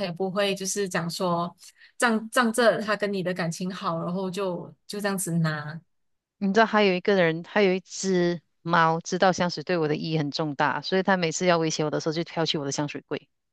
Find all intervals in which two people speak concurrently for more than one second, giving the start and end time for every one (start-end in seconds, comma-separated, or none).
none